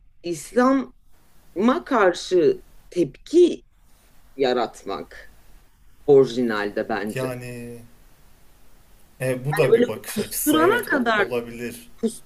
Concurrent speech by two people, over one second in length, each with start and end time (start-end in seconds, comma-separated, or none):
9.5-11.3